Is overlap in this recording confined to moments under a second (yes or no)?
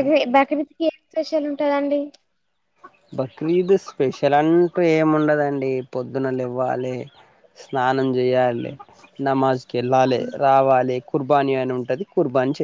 yes